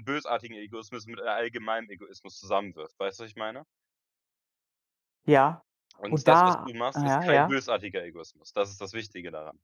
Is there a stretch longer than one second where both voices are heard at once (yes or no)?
yes